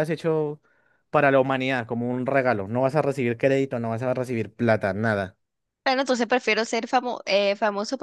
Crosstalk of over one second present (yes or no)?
no